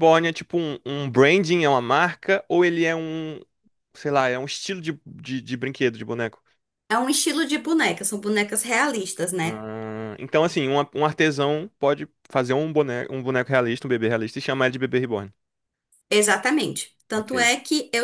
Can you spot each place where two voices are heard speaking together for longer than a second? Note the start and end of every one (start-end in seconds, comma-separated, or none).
none